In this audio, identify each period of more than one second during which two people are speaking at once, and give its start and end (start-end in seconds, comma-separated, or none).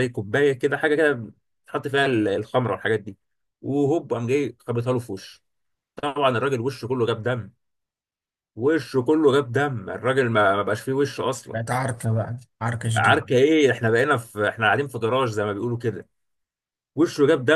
none